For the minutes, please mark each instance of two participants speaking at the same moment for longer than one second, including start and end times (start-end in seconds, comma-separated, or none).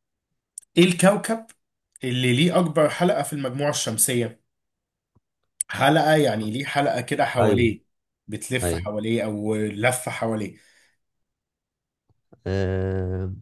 none